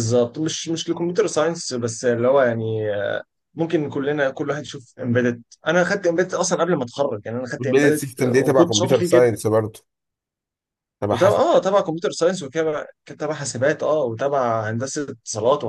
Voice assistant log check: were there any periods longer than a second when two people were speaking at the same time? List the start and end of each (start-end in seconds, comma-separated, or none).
7.6-9.3